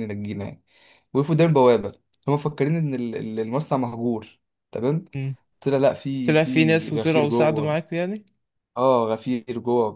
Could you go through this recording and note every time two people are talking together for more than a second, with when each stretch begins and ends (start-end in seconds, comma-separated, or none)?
6.3-7.8